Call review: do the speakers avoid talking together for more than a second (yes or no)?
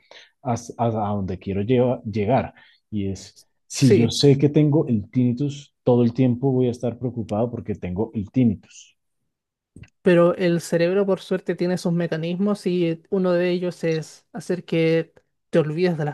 yes